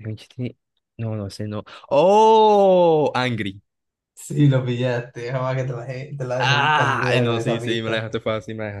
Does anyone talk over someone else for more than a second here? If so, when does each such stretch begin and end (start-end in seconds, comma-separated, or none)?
6.4-8.1